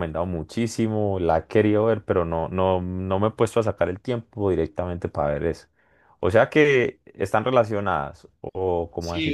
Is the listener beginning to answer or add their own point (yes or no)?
yes